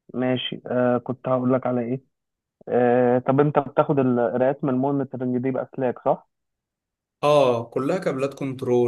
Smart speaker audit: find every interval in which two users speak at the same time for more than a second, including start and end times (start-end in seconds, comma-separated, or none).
none